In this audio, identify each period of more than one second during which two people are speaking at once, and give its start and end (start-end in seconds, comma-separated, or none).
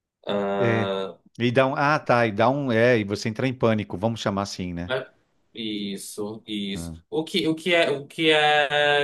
none